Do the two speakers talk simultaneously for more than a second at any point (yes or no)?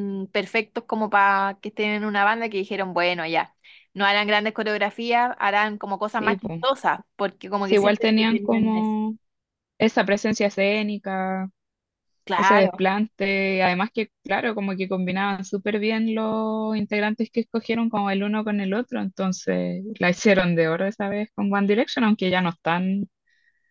yes